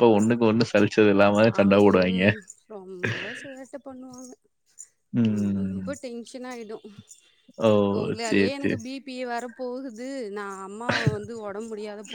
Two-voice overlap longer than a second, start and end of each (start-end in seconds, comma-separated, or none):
none